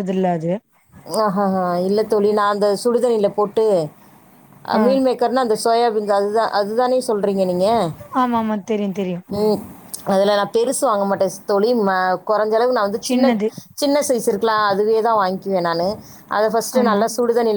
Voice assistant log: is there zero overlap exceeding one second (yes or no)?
yes